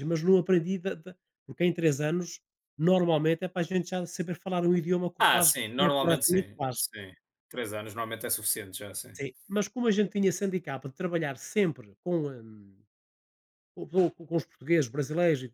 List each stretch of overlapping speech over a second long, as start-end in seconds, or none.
5.2-6.8